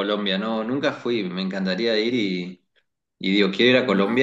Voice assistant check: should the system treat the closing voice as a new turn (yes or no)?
no